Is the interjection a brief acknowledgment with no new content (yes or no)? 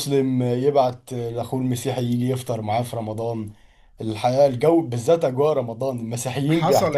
no